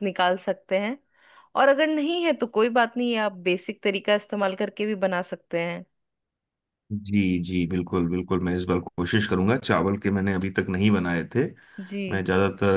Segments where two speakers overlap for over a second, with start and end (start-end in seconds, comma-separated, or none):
none